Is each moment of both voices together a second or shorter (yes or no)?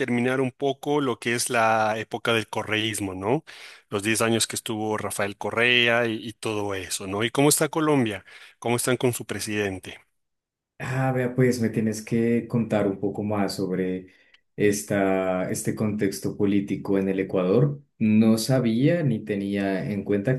yes